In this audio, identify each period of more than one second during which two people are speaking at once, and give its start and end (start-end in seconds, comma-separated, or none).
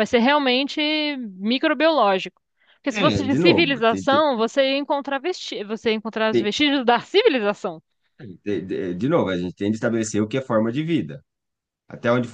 2.9-4.2